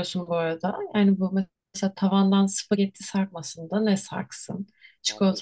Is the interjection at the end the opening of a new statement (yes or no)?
no